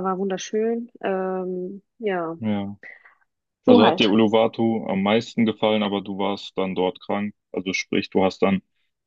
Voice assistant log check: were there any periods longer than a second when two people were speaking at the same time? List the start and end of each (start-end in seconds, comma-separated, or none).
none